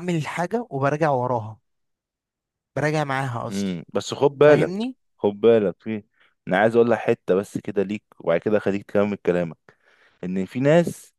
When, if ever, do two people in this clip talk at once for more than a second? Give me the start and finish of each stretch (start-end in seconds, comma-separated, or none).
3.5-4.7